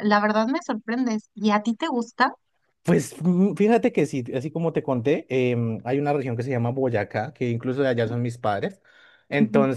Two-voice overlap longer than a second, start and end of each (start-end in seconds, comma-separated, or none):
none